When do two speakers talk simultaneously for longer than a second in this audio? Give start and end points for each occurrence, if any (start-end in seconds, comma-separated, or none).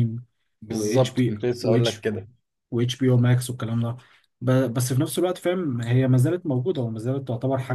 0.7-2.1